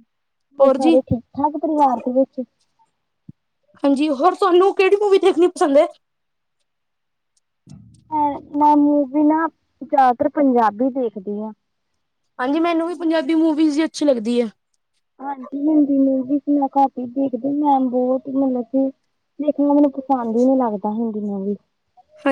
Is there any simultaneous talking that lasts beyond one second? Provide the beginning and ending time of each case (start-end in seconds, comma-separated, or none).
none